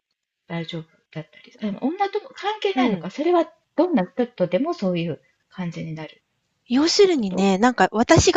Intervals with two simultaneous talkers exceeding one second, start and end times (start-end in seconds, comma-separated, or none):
none